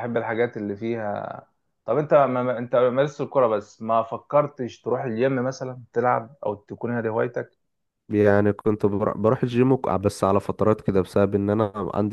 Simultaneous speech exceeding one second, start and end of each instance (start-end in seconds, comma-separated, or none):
none